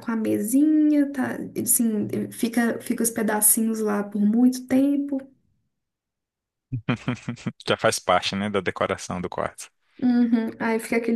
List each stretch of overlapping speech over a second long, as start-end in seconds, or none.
none